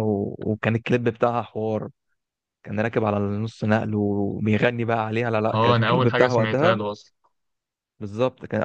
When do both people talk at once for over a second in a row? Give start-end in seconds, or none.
5.5-6.8